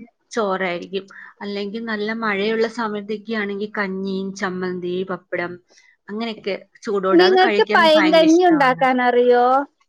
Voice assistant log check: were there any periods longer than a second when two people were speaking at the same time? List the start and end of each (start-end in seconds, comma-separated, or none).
7.2-8.8